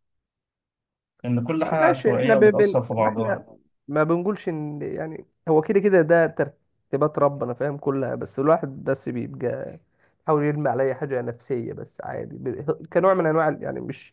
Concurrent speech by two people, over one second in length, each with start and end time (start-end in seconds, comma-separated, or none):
1.6-3.5